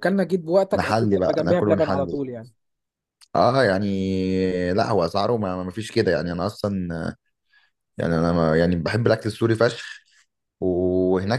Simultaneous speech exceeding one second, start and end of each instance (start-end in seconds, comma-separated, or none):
0.7-2.2